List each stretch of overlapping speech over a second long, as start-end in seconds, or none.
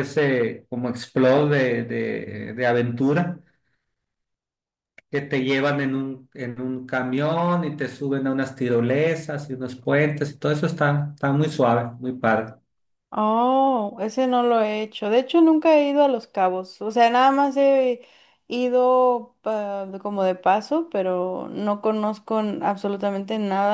none